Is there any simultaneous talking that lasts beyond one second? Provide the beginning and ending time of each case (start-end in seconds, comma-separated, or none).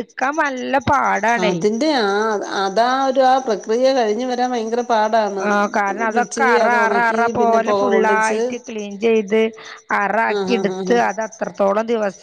6.2-8.4